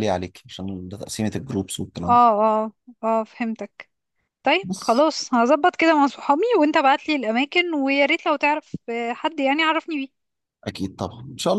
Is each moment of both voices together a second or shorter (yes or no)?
yes